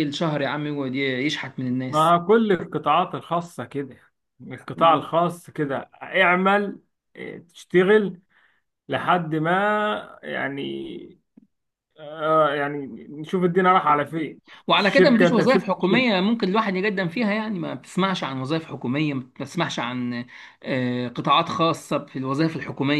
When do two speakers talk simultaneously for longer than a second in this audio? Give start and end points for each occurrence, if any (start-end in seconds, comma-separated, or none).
14.8-16.1